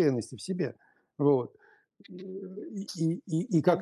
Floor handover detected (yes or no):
no